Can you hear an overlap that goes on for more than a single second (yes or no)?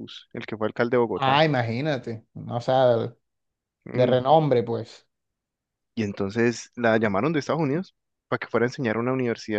no